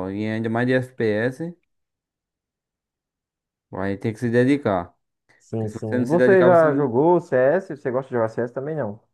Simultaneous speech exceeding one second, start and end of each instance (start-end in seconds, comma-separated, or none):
5.6-6.9